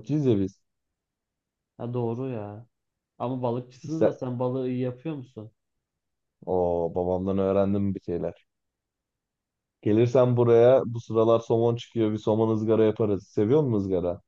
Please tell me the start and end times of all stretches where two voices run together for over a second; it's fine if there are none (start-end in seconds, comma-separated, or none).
none